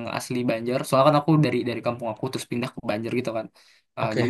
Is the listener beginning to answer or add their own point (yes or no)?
no